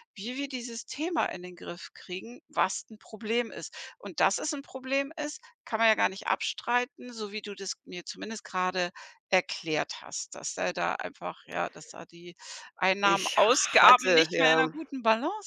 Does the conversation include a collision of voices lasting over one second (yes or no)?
yes